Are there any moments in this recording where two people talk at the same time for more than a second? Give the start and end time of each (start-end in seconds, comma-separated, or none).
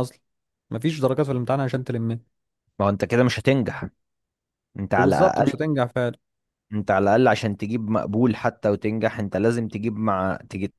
none